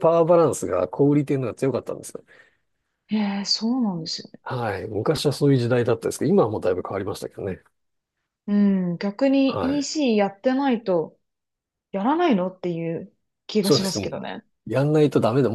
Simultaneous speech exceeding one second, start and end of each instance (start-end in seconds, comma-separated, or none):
none